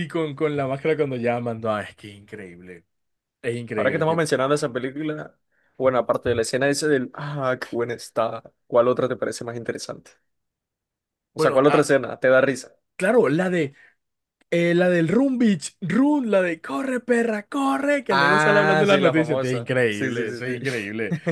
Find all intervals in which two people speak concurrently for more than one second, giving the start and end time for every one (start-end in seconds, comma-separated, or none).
18.1-20.6